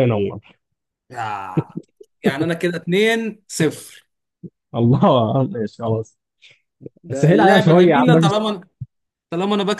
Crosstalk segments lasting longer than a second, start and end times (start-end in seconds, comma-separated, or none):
7.1-8.3